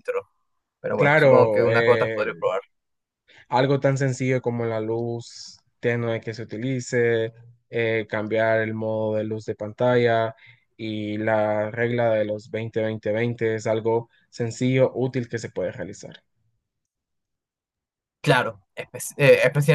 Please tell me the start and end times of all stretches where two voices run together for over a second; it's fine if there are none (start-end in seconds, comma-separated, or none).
0.9-2.4